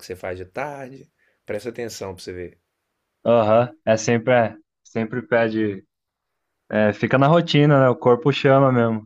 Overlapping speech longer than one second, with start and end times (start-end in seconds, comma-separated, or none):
none